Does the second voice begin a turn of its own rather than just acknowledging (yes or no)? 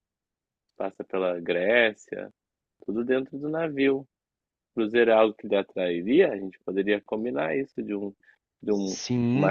yes